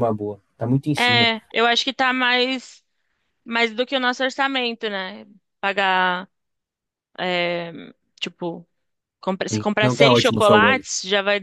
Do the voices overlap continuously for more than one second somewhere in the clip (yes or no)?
yes